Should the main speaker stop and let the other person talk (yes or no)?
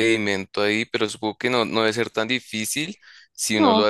no